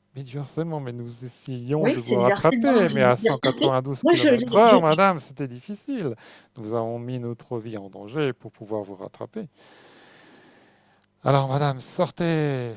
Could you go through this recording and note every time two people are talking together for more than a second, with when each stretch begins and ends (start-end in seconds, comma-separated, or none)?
1.8-5.0